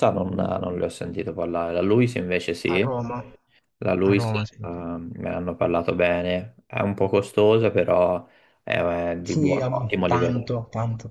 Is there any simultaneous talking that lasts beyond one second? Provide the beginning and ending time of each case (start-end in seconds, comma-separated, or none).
9.2-10.6